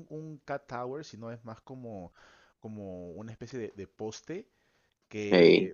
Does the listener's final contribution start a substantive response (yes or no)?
no